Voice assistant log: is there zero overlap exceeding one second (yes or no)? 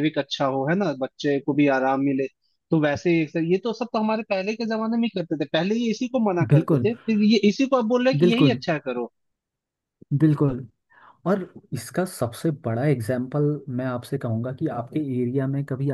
yes